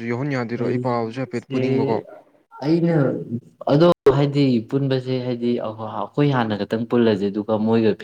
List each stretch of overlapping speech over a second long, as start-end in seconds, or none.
0.6-2.0